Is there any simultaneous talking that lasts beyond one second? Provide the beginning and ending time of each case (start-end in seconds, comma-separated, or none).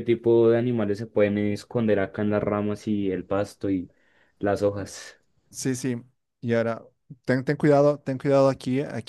none